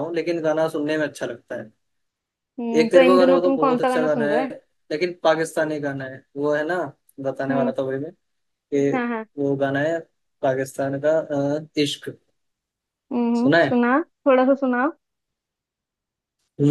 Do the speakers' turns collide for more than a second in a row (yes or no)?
yes